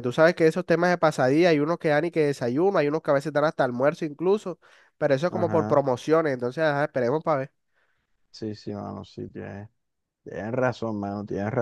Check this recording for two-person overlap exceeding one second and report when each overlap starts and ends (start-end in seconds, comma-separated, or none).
none